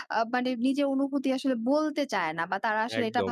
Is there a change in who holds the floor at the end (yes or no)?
no